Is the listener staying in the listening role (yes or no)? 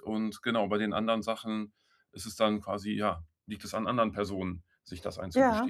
no